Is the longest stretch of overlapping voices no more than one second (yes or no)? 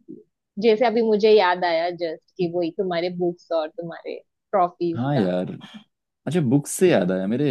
yes